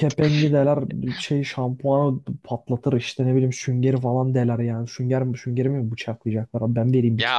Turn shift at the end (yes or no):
yes